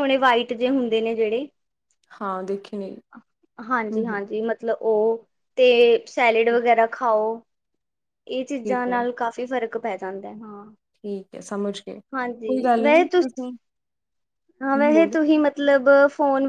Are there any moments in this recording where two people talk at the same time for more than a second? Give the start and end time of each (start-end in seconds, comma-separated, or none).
none